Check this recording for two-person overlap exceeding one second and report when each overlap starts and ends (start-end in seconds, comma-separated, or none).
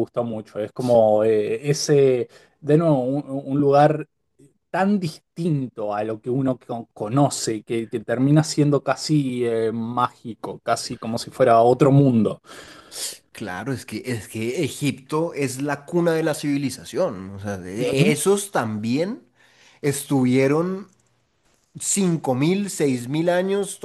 none